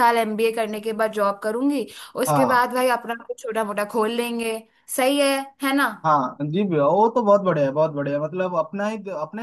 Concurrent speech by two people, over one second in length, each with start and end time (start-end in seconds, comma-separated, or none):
none